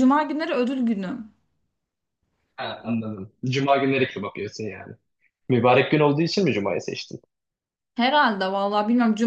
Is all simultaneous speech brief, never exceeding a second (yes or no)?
yes